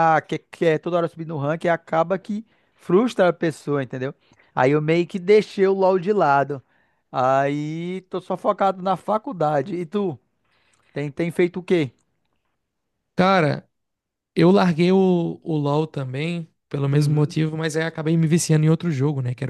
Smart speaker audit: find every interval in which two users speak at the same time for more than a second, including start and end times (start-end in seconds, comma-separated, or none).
none